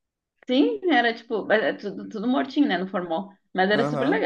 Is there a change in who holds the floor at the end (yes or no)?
yes